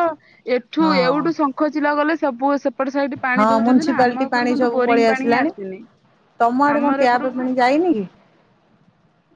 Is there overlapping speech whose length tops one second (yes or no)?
yes